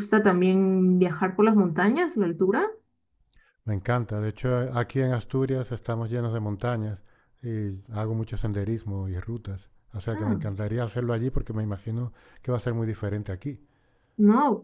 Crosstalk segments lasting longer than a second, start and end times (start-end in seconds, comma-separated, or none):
none